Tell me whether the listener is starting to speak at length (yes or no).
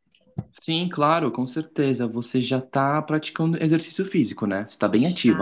yes